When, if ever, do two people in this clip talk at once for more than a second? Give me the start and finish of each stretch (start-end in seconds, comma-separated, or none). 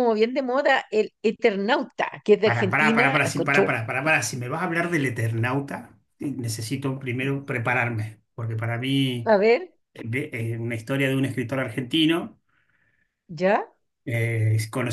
2.5-3.7